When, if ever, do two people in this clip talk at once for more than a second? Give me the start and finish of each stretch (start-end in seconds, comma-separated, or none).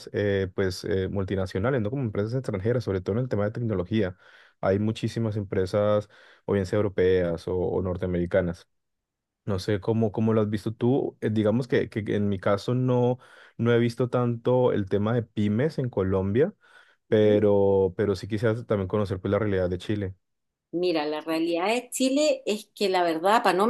none